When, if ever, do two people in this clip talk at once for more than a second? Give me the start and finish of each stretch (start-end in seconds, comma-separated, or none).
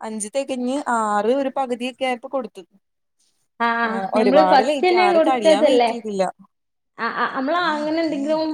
3.9-5.9